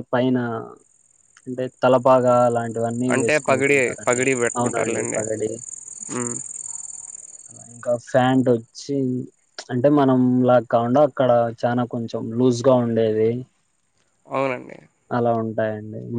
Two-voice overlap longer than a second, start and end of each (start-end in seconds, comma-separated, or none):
3.1-5.2